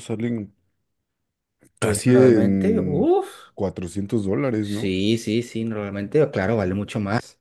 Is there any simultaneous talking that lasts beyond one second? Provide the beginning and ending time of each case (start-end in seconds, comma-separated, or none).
1.8-3.1